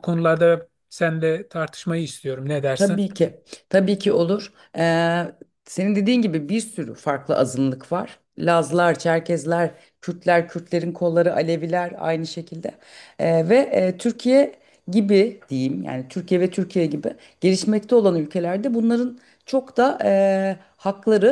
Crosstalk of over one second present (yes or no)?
no